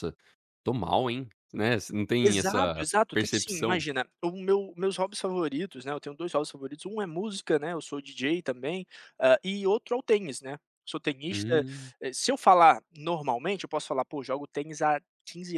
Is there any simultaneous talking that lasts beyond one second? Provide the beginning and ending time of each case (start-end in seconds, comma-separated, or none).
2.2-3.9